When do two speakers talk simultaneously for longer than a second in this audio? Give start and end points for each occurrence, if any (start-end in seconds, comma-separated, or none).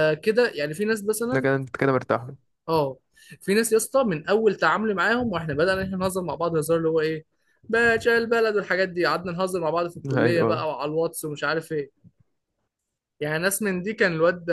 none